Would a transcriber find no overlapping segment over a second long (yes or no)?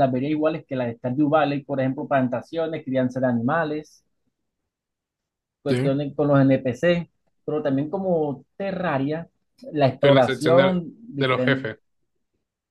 no